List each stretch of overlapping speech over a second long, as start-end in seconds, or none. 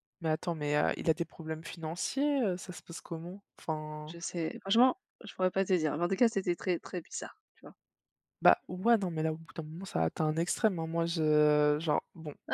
none